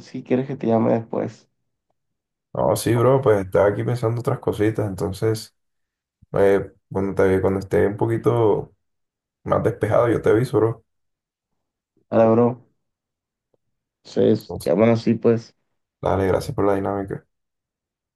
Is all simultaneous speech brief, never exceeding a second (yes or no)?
yes